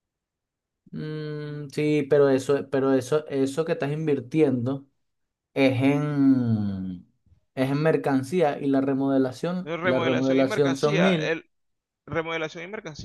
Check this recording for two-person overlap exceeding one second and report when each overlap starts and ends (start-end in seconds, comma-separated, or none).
9.6-11.4